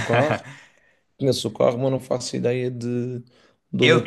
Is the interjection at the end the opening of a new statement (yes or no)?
yes